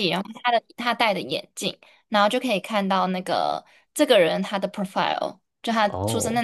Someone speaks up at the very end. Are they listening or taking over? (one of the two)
listening